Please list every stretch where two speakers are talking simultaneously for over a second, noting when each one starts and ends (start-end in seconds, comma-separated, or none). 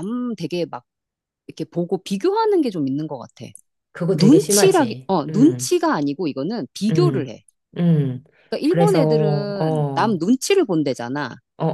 4.1-5.7, 8.7-10.2